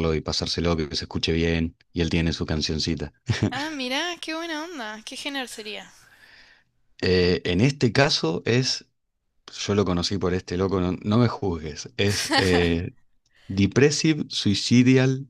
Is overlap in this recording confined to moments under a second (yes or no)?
yes